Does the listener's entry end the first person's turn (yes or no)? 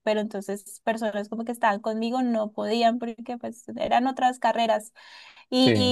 no